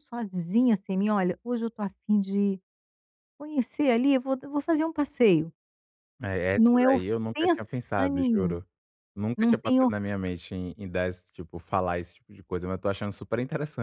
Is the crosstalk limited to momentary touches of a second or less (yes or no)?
no